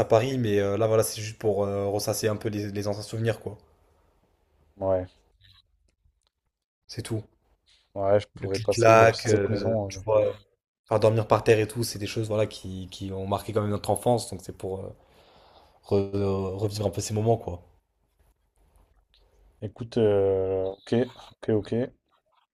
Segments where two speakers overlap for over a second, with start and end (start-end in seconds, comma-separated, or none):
8.4-10.0